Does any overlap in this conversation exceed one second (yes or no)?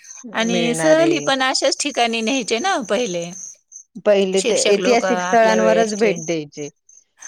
yes